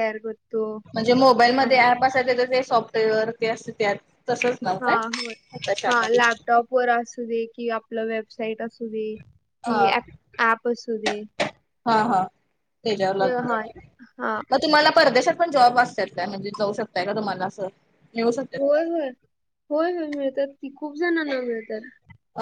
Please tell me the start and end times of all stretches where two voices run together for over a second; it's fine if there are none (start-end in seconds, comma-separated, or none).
none